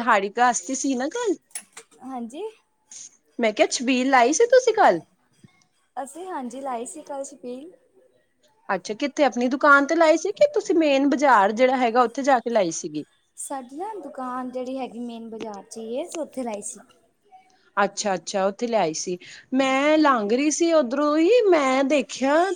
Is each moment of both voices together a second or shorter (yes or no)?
yes